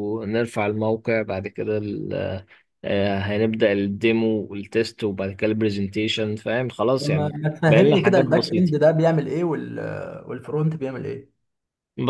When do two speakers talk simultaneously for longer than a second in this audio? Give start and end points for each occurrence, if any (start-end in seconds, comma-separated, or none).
7.0-8.7